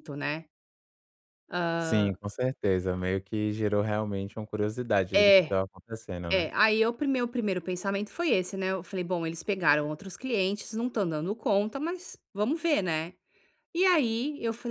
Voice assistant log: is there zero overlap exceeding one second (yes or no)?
yes